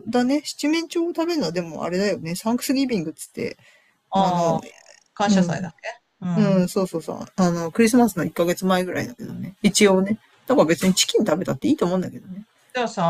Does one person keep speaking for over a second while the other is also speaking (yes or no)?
no